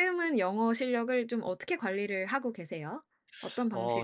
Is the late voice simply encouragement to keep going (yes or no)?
no